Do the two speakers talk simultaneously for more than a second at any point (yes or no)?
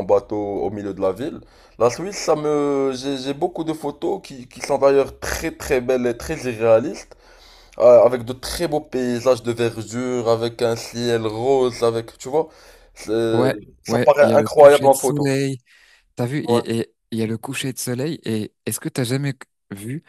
yes